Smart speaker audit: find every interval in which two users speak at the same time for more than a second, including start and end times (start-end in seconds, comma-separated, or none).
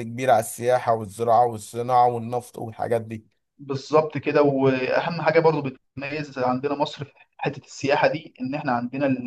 none